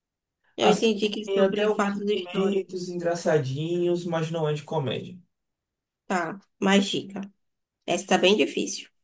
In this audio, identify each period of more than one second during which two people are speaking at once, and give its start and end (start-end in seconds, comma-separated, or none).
0.6-3.0